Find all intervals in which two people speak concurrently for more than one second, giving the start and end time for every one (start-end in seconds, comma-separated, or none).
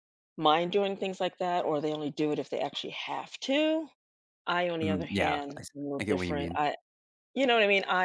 4.8-6.6